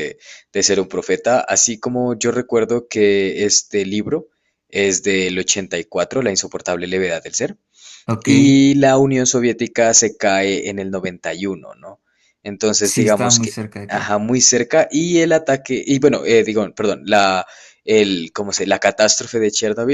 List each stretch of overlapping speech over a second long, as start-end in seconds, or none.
12.8-14.2